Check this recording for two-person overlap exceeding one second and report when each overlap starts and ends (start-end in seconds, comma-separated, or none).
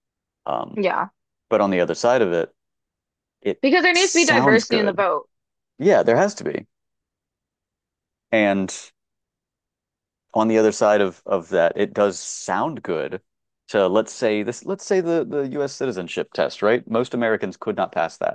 3.6-5.0